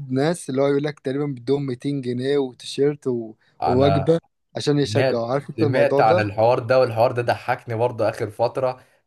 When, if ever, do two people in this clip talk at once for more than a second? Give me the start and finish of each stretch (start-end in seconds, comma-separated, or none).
4.8-6.2